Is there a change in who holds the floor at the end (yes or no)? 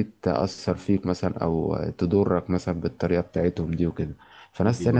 no